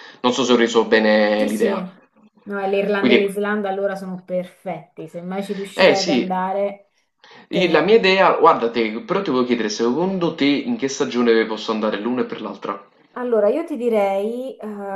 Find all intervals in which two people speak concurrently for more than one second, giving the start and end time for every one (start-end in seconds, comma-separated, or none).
none